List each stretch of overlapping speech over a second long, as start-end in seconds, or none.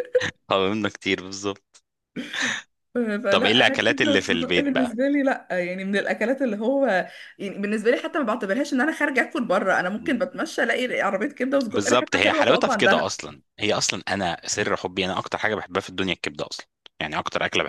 3.3-4.7, 11.7-13.2